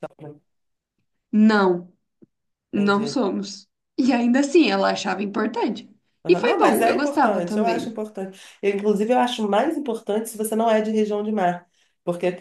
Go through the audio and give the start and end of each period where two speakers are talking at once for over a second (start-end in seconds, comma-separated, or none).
6.3-7.9